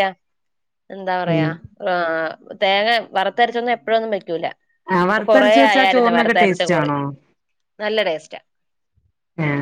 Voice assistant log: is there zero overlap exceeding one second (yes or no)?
no